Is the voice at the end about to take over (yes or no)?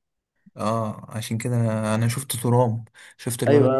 yes